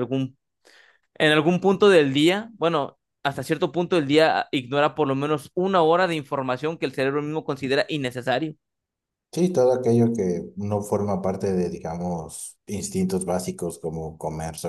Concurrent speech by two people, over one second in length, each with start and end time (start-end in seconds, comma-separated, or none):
none